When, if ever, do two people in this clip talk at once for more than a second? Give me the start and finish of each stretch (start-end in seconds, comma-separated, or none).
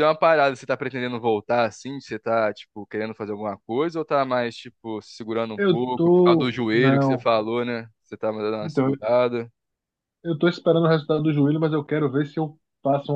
5.6-7.2